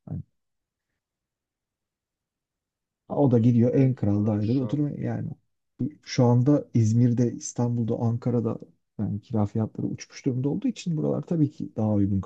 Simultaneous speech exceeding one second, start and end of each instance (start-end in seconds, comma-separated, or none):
3.1-4.9